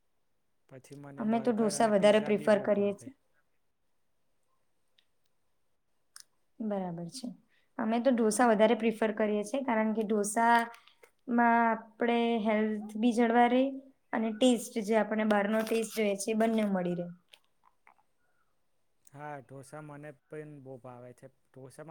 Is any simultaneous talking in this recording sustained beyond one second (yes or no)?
yes